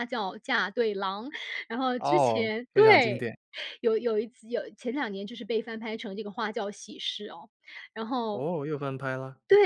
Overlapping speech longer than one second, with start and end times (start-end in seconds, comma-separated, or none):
2.0-3.3